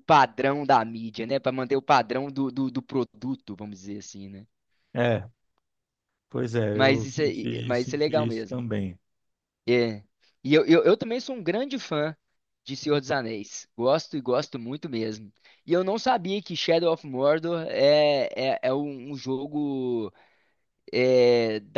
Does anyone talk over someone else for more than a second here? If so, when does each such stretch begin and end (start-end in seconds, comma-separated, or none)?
6.7-8.6